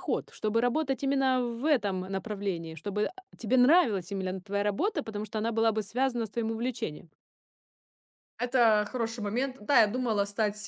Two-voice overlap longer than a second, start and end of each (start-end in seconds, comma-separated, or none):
none